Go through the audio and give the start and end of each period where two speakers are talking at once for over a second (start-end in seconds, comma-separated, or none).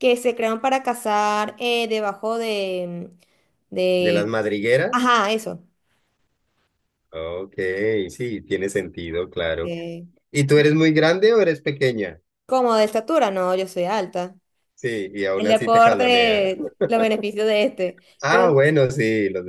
15.3-16.6